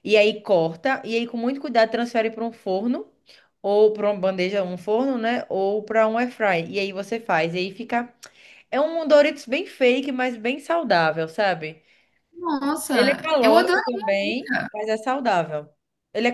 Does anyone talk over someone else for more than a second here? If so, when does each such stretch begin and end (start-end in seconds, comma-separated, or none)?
12.9-14.7